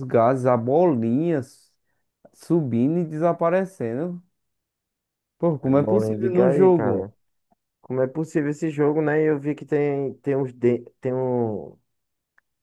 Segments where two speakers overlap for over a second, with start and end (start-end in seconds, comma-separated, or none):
5.6-7.1